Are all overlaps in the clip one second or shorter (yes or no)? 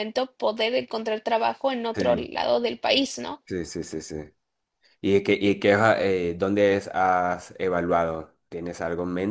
yes